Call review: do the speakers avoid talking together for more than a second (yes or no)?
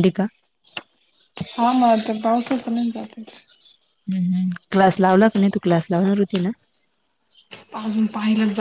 yes